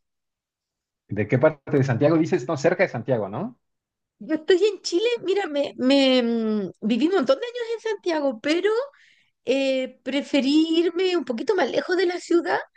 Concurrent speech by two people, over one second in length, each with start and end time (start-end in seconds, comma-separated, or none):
none